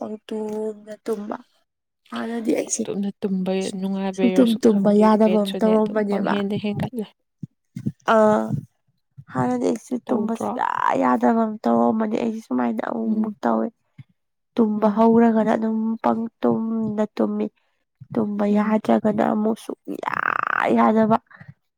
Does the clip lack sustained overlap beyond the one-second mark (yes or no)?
no